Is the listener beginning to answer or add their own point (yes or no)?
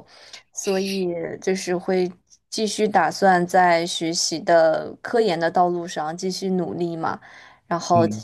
no